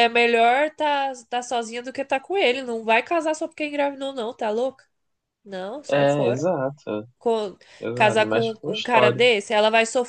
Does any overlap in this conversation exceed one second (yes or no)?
yes